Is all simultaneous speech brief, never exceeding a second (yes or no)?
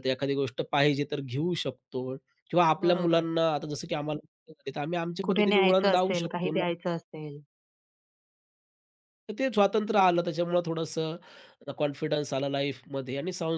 no